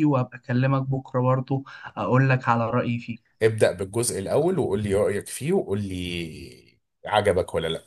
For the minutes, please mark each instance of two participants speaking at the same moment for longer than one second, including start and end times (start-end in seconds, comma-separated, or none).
none